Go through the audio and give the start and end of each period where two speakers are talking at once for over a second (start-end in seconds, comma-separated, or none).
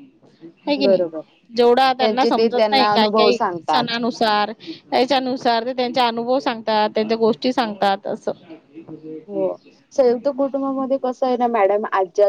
2.0-3.8